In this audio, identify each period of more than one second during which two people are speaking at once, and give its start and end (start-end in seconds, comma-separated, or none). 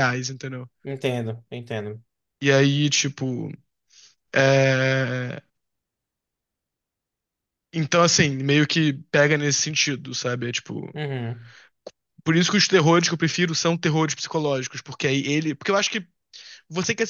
none